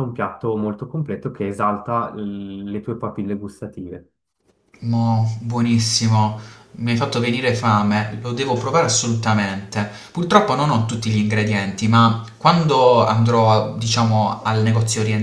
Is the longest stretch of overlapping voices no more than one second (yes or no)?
yes